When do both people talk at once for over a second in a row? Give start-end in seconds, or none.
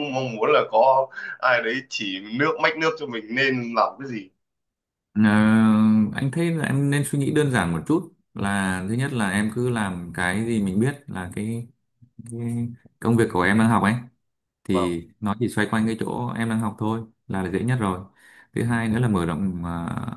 none